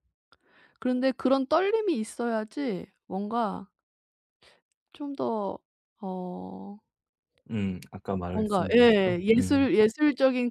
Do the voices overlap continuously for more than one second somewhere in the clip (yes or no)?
yes